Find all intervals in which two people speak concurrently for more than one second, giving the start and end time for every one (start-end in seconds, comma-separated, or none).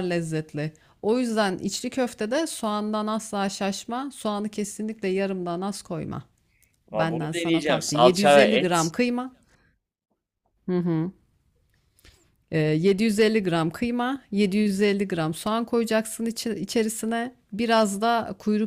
6.9-8.9